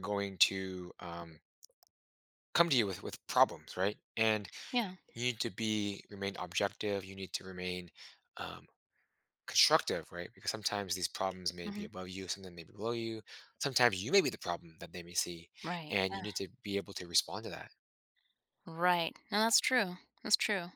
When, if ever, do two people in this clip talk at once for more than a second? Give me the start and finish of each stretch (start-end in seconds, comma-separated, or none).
none